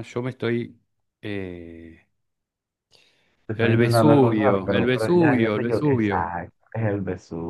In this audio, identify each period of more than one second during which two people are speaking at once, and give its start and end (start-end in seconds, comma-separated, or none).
3.5-6.3